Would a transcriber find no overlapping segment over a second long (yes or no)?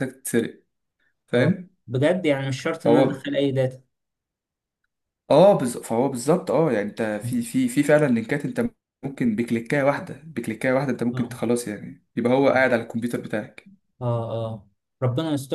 yes